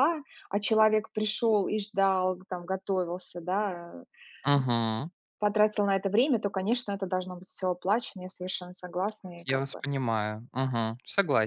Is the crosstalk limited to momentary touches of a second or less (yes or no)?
yes